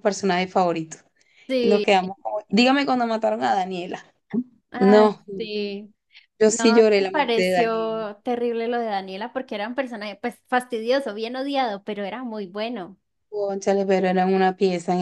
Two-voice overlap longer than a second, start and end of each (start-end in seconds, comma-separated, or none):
6.5-8.1